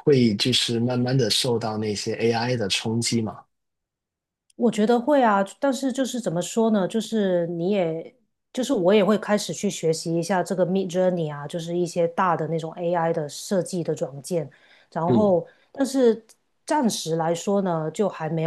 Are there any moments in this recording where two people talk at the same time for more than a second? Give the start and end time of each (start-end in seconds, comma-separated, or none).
none